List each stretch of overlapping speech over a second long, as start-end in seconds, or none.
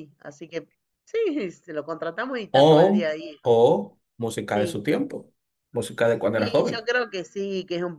none